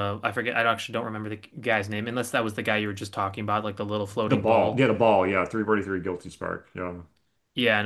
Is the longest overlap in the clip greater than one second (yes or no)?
no